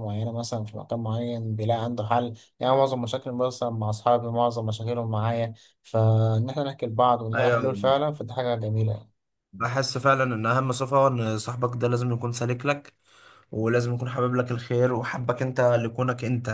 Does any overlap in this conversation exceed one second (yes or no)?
no